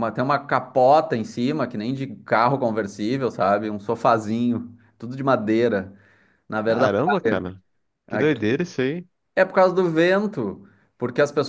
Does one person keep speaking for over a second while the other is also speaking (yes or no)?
no